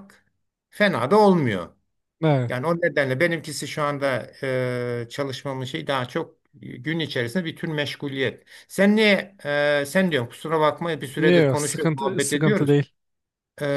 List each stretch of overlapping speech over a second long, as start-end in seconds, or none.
11.2-12.8